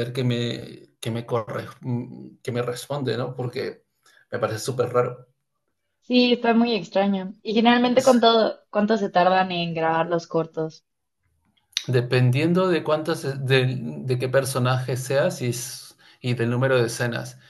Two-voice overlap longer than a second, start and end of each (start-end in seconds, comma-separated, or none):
none